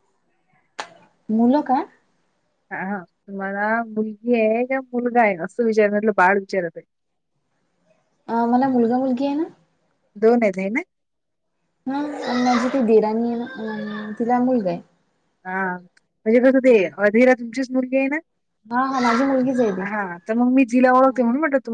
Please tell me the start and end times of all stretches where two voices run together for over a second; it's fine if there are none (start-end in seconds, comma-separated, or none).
none